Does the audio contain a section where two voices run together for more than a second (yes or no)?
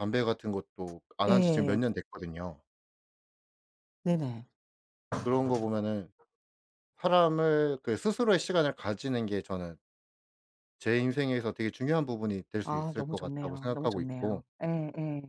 yes